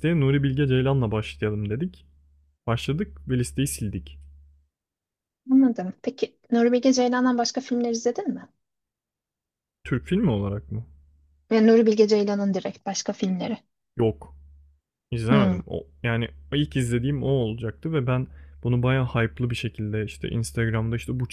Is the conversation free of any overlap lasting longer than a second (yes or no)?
yes